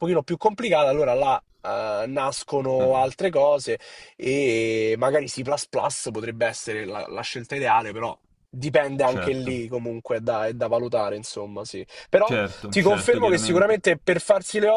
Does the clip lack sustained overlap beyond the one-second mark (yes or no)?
no